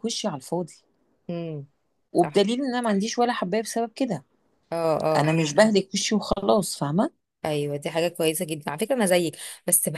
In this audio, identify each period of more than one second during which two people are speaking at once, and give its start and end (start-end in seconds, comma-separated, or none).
none